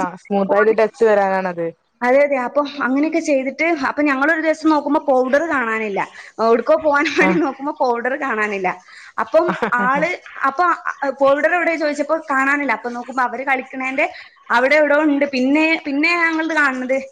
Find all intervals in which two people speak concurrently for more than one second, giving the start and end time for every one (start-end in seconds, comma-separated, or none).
none